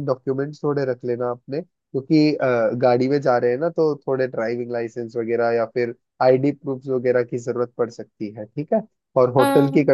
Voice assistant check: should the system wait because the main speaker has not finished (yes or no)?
yes